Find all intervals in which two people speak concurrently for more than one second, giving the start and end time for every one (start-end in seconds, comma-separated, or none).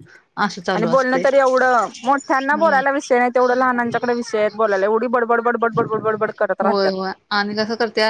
none